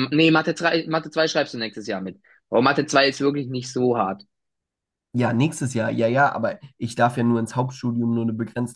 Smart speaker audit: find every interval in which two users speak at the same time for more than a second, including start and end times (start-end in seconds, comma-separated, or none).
none